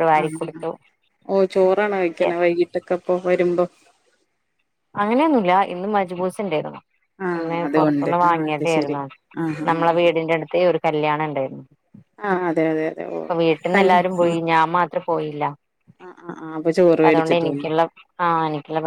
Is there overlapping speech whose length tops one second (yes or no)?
yes